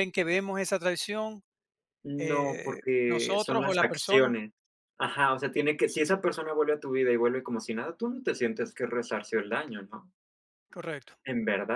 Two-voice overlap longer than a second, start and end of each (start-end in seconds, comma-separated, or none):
2.2-4.3